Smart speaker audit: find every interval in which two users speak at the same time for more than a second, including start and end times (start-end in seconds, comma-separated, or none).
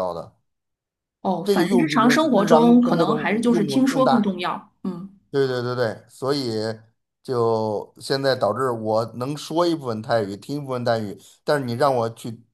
1.4-4.3